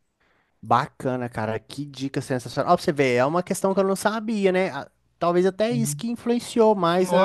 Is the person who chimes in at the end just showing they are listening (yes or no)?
no